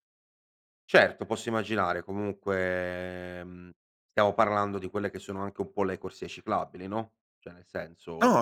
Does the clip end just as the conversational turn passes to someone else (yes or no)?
yes